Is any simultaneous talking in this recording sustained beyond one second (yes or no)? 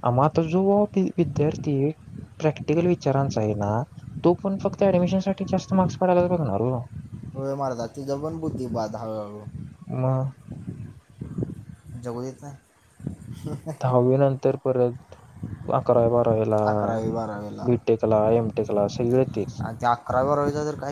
no